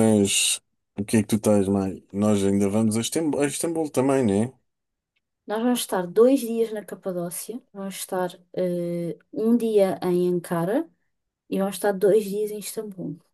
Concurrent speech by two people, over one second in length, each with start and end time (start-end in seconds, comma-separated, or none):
none